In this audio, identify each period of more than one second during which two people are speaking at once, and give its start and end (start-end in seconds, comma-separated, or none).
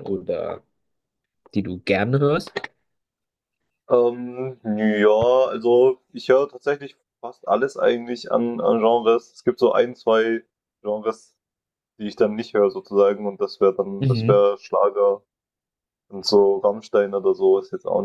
none